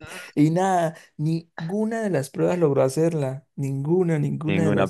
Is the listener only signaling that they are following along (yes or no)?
no